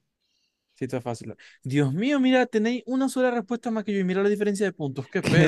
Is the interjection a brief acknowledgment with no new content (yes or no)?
no